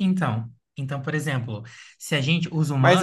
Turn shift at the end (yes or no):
yes